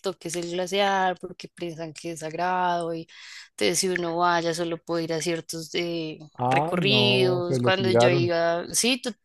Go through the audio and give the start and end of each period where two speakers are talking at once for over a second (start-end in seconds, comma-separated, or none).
6.3-8.3